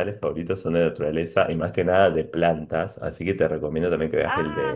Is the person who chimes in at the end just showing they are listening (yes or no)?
yes